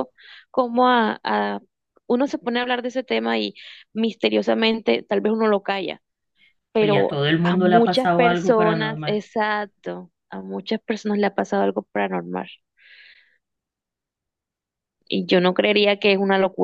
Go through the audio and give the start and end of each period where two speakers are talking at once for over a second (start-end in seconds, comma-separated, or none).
6.8-9.2